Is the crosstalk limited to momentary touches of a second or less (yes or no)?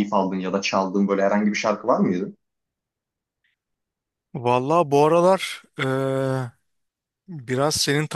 yes